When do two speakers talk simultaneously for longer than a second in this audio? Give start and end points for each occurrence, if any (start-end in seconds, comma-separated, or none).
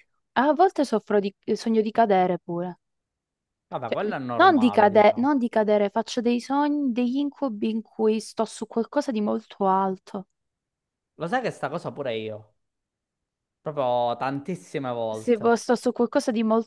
3.9-5.3